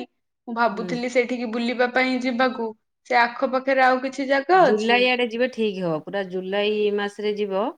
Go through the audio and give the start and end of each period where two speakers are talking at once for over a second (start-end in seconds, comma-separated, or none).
none